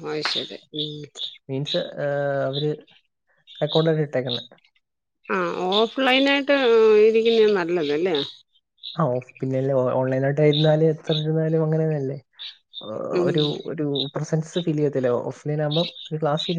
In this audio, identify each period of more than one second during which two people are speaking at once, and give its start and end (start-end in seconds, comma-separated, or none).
none